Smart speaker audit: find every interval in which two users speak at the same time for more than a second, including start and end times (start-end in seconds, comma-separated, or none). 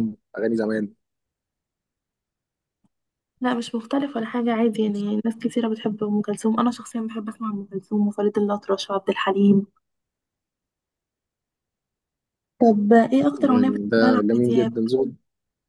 13.4-14.7